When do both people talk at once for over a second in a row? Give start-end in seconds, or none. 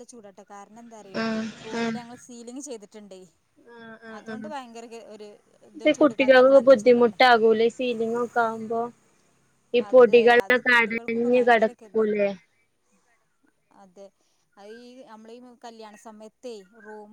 9.9-12.2